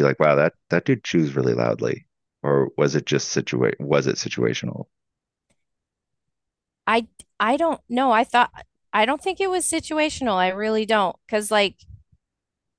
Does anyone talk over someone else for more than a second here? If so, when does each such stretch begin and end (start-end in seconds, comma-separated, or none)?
none